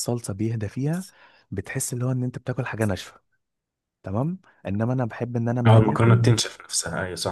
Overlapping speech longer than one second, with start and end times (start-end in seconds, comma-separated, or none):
none